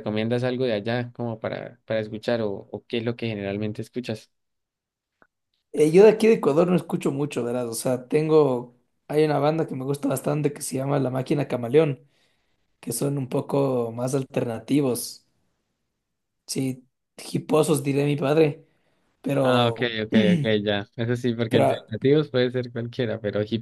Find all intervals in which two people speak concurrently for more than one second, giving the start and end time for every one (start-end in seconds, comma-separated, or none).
none